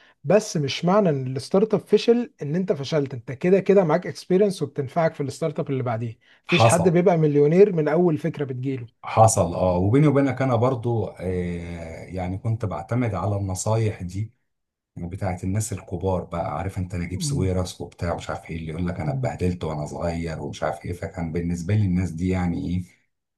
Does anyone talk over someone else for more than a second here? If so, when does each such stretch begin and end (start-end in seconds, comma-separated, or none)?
none